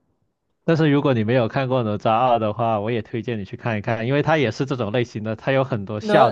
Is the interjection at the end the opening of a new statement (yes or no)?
yes